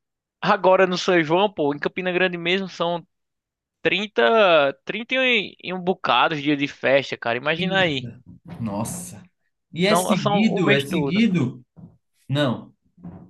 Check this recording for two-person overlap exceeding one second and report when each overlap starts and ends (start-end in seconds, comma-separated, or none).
9.8-11.2